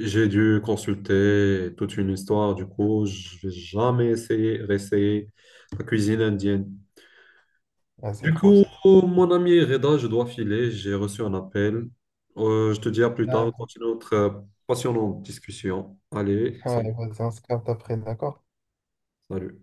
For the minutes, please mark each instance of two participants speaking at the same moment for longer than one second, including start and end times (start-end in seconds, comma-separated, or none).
none